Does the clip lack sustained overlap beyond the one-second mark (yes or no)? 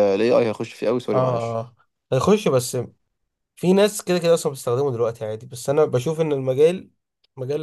yes